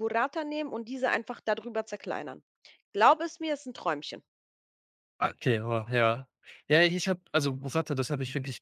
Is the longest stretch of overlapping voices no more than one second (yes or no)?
yes